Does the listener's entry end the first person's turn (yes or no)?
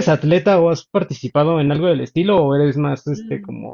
yes